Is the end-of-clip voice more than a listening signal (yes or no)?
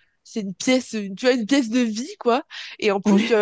no